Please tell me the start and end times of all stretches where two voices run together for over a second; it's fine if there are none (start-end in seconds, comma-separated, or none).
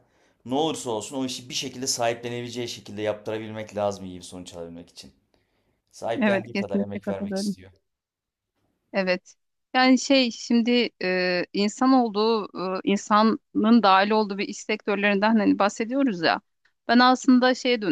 6.2-7.6